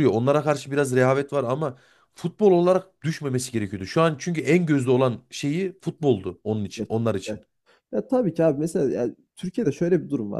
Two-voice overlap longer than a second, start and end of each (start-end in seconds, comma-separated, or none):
none